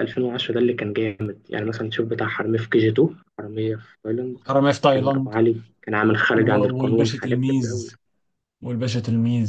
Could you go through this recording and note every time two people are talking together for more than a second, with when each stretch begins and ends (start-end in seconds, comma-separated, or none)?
6.3-7.8